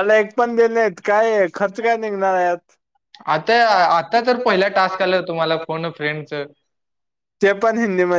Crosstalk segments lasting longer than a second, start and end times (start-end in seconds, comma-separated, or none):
none